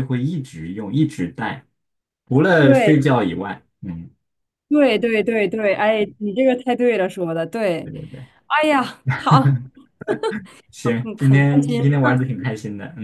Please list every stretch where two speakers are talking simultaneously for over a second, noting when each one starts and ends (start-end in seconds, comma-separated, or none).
10.8-12.4